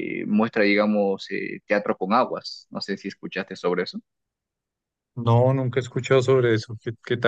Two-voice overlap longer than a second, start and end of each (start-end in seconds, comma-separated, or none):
none